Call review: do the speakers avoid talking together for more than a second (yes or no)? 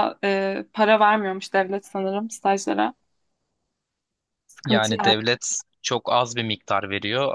yes